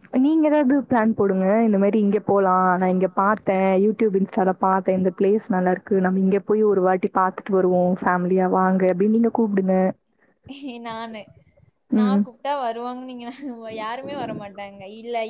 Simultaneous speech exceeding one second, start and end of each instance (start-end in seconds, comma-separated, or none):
none